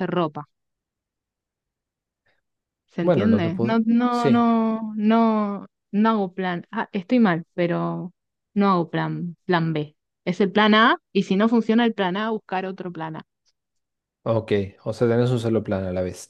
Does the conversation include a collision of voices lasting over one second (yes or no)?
yes